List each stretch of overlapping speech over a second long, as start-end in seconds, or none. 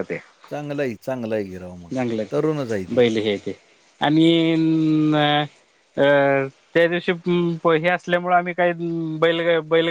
none